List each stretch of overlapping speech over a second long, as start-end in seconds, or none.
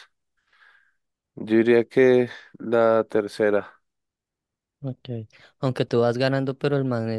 none